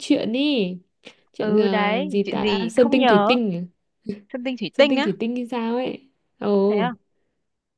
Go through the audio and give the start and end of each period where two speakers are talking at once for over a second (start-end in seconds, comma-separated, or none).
1.4-3.4